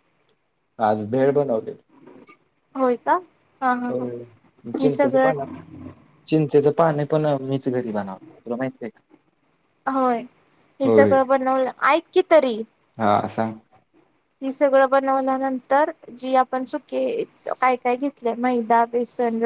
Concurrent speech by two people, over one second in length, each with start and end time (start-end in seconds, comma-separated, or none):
none